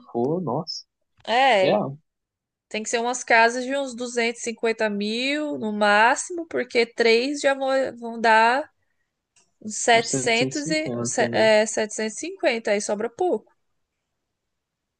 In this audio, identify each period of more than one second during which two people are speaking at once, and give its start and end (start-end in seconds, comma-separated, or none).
9.9-11.5